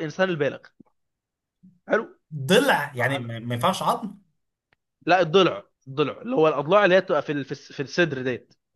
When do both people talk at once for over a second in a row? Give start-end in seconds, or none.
none